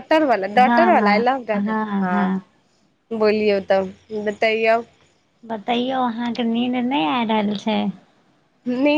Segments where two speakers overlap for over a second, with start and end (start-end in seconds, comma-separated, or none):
0.6-2.4